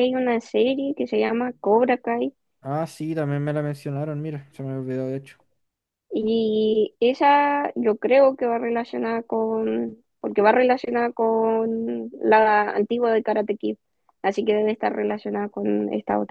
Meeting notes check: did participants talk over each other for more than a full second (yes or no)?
no